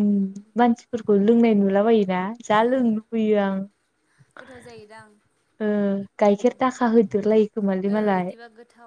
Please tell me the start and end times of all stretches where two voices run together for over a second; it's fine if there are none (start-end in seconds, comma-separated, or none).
none